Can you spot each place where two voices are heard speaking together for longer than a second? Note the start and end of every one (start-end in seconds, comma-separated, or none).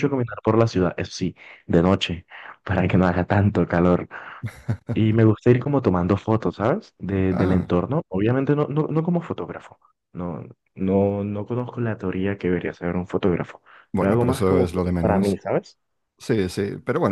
14.0-15.4